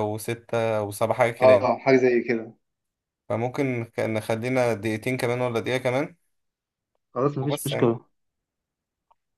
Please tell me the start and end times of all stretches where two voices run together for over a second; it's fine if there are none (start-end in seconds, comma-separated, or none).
none